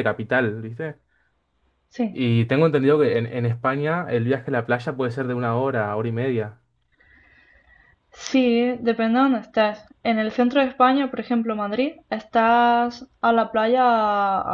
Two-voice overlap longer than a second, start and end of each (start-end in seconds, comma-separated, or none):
none